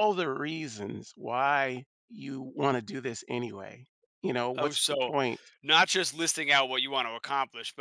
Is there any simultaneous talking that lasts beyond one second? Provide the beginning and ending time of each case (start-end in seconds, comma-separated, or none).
none